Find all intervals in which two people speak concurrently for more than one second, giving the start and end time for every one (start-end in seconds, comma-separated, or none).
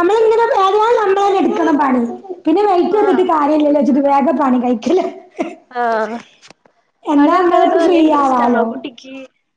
7.2-8.6